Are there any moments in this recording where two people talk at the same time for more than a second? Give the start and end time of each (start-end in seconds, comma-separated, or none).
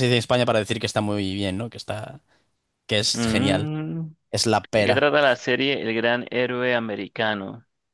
none